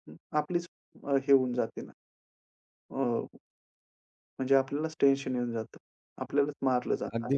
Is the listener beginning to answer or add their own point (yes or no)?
yes